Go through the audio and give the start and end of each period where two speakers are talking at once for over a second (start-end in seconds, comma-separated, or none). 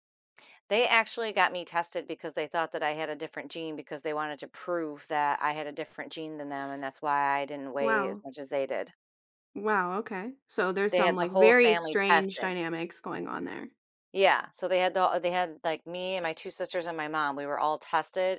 10.9-12.5